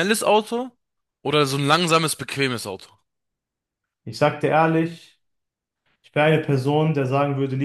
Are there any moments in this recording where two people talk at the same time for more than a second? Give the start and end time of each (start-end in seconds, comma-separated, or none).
none